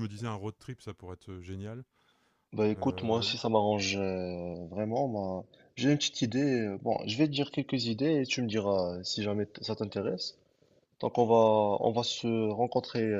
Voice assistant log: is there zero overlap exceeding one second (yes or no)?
yes